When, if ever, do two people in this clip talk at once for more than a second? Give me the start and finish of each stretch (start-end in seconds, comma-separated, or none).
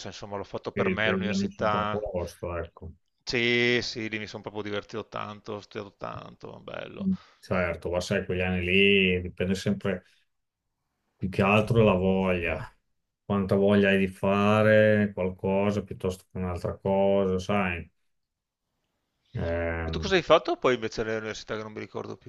0.7-2.0